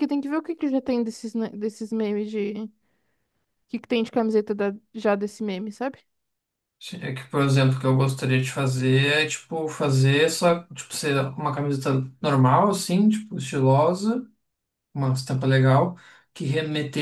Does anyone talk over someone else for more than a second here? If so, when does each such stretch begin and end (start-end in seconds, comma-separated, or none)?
none